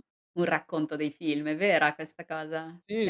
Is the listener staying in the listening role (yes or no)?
no